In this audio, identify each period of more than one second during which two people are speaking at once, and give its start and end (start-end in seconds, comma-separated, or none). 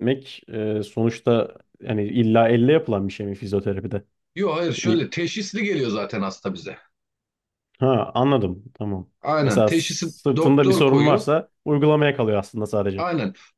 9.2-11.3